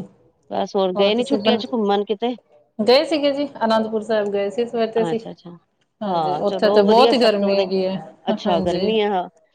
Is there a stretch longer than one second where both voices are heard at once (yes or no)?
yes